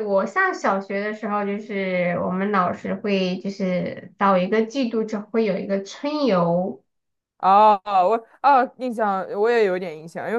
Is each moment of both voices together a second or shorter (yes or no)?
yes